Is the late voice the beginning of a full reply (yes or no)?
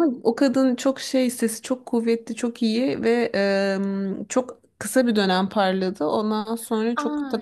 yes